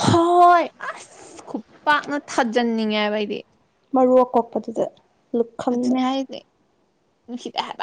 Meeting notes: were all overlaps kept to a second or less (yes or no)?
yes